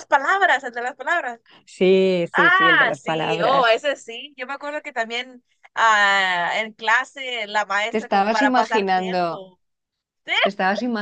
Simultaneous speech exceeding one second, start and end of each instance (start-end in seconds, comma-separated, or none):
2.3-3.8, 7.9-9.4